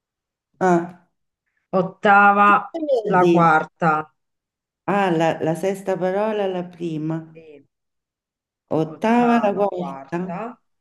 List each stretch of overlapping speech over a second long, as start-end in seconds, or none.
8.9-10.2